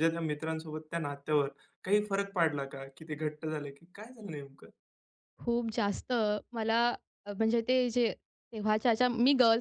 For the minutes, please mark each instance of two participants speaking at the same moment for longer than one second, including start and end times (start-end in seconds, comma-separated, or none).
none